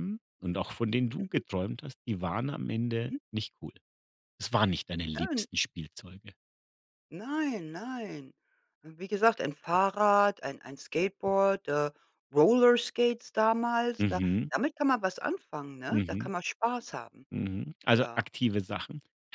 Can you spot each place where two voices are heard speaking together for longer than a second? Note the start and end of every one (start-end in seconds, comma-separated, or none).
none